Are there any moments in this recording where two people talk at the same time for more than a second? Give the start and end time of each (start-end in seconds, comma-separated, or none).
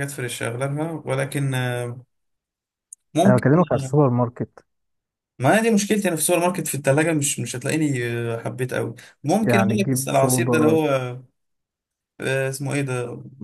9.4-10.8